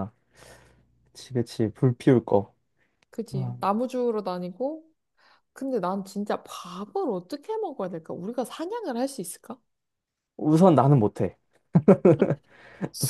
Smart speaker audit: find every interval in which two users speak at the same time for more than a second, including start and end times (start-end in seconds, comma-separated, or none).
none